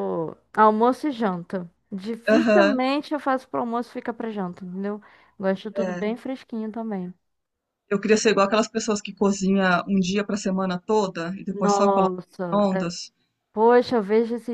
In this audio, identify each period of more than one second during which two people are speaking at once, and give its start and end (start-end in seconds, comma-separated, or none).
11.5-12.9